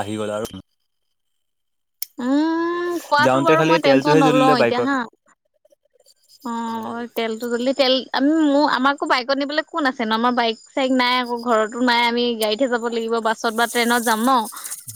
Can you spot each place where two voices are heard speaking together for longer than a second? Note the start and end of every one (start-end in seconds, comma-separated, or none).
3.2-4.9